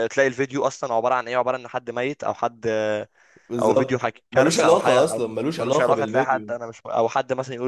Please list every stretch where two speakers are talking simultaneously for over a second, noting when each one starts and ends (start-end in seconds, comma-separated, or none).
3.6-6.5